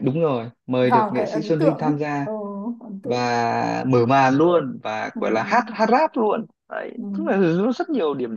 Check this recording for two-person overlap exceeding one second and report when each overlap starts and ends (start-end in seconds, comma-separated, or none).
0.8-2.3